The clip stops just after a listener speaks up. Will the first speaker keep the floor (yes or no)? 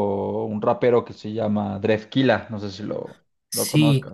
no